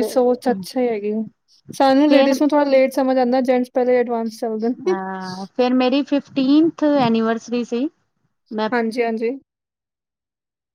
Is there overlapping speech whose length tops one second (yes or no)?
no